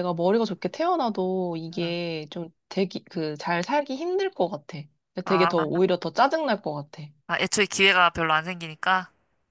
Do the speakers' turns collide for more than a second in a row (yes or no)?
no